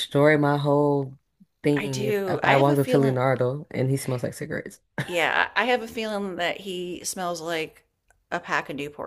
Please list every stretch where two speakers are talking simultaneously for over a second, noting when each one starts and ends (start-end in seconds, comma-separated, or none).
1.9-3.2